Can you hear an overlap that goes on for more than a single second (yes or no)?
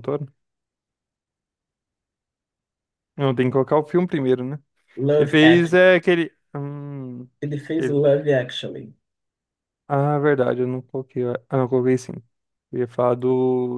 no